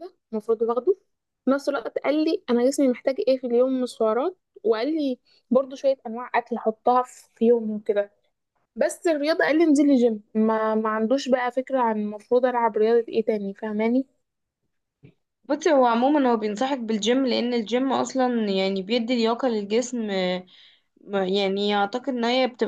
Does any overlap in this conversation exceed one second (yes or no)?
no